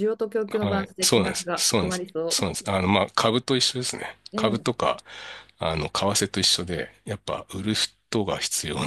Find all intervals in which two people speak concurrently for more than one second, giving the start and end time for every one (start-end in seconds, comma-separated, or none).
0.6-2.4